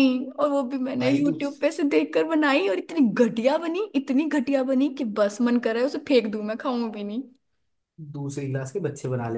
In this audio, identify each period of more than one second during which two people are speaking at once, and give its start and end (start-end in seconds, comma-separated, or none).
none